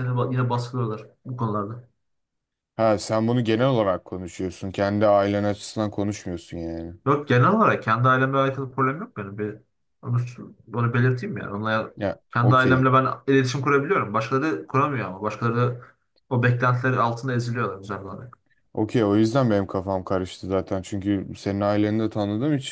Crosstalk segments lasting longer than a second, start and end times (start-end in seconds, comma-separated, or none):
none